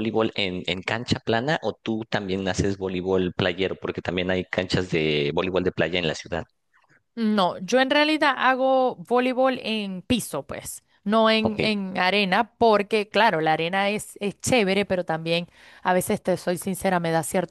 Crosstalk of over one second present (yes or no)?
no